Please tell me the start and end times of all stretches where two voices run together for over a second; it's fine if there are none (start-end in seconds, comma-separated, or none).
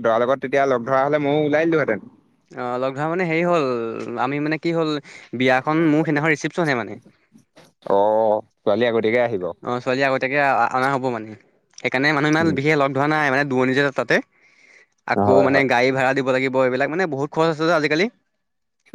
none